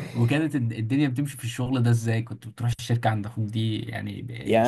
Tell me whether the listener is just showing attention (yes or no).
no